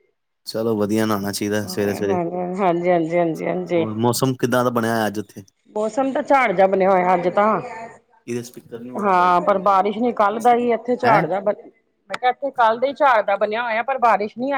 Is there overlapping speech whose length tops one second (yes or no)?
no